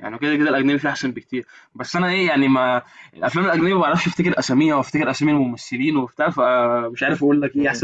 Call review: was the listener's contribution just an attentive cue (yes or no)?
no